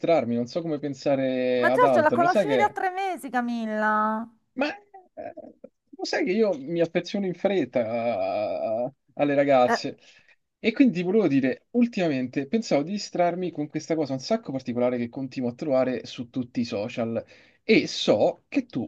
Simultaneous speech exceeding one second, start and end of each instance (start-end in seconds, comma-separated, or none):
1.6-2.8